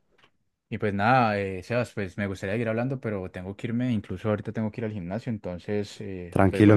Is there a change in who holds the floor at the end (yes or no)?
yes